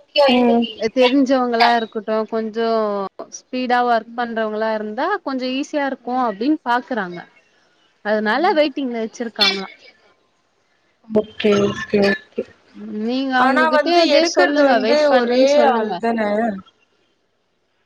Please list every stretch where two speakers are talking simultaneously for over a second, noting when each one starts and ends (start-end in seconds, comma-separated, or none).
13.5-15.9